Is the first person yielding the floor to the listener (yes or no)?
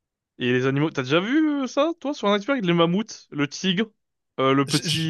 no